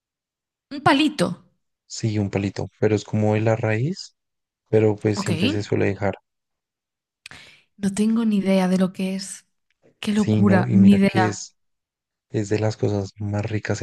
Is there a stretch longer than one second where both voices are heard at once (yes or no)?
yes